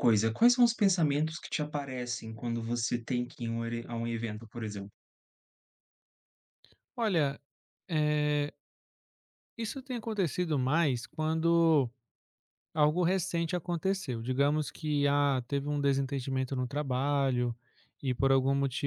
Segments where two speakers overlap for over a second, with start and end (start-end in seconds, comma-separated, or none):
none